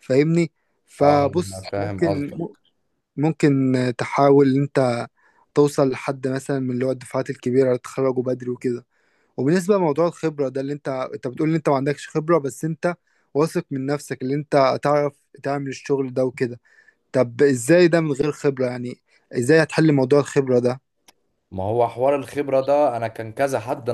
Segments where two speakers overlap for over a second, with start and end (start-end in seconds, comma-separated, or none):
1.0-2.4